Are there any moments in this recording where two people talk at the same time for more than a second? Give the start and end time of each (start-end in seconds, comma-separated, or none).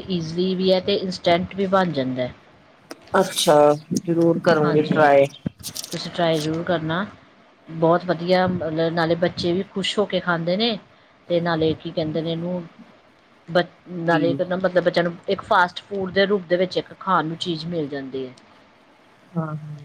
none